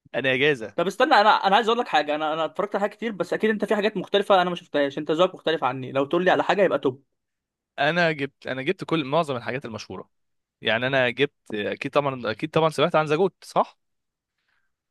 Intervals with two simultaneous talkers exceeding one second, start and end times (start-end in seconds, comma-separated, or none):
none